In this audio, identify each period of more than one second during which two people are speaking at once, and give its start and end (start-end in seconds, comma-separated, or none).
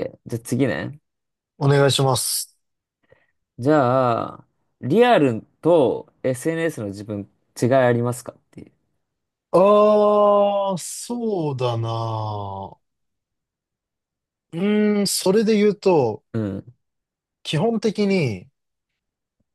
none